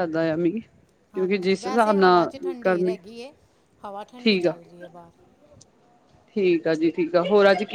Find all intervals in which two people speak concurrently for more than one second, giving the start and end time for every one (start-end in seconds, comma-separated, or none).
1.1-3.0